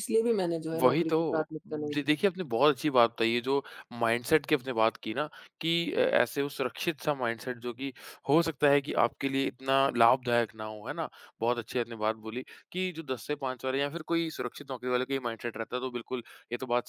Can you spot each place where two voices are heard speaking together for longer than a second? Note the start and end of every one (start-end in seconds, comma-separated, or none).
0.8-2.1